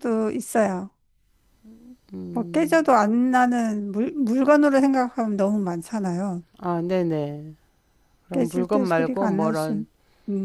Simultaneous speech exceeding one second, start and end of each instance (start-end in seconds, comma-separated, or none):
8.3-9.7